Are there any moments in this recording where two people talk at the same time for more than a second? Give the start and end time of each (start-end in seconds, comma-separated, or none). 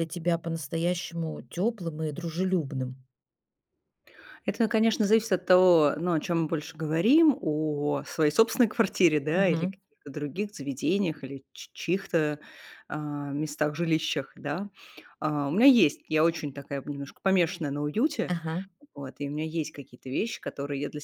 none